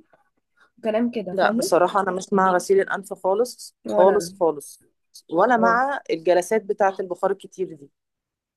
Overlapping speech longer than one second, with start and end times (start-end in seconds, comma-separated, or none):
none